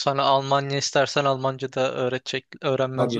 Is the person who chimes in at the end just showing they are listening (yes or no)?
no